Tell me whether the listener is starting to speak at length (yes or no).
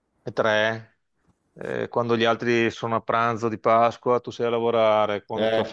no